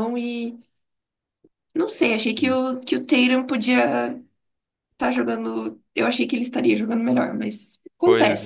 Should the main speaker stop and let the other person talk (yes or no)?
yes